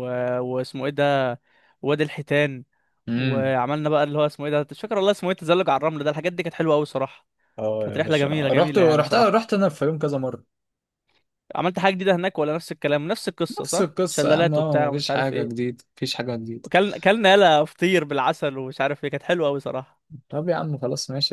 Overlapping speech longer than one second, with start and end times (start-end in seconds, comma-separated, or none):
7.8-9.5, 13.6-15.7